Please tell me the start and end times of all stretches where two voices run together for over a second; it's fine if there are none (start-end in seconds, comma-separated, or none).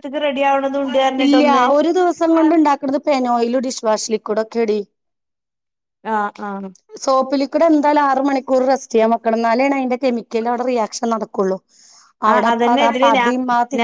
none